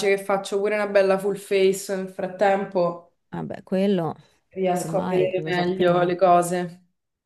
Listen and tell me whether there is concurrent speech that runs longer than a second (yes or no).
yes